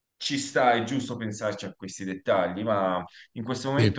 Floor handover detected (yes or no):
no